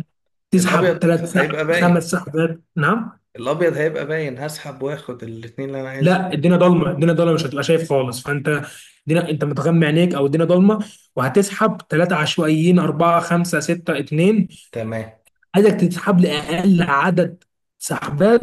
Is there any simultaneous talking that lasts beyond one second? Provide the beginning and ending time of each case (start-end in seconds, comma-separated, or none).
0.6-2.1